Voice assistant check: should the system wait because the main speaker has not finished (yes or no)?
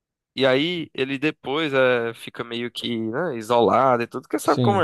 yes